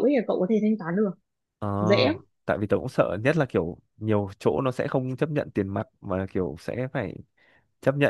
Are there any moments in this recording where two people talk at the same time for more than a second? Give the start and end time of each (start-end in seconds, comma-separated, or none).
none